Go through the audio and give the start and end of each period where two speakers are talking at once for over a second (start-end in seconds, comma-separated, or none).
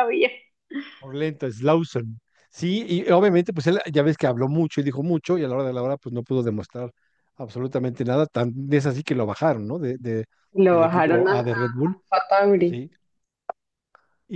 10.7-11.9